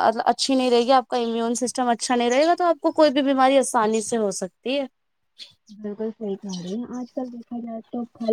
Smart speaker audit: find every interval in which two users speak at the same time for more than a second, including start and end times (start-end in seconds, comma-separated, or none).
none